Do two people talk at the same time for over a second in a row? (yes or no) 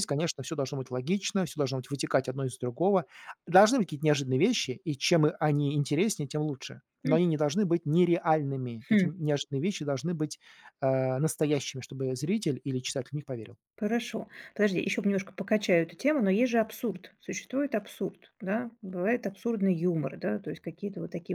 no